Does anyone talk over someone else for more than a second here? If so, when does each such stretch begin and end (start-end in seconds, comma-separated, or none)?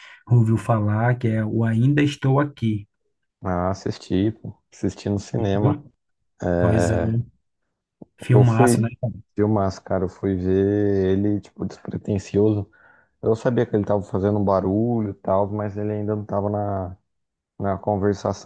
none